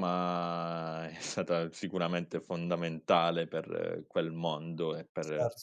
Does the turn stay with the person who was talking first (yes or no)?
yes